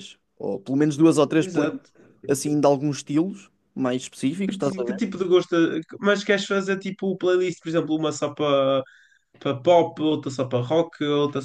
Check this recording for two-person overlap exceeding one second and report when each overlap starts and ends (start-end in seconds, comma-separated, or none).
none